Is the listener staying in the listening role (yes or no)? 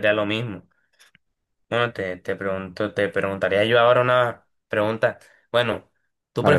yes